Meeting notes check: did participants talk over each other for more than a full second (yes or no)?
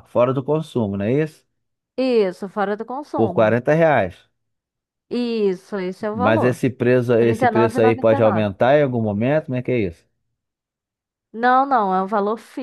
yes